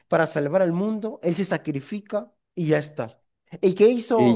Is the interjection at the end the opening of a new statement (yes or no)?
no